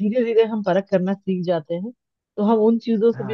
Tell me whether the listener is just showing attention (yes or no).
yes